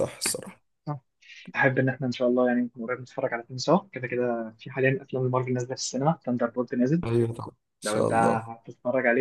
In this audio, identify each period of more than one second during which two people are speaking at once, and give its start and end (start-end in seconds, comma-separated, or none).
none